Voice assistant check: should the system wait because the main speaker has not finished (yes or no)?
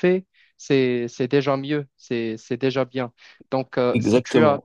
yes